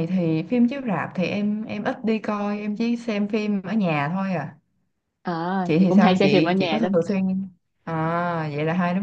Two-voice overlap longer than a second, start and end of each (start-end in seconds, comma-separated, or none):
5.6-7.0